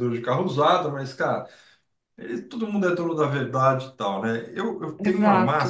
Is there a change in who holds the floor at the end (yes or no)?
yes